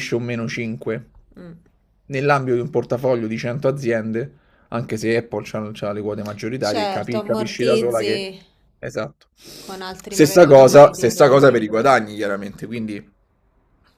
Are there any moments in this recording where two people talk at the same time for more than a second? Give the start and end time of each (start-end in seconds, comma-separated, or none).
6.7-8.2, 10.1-11.4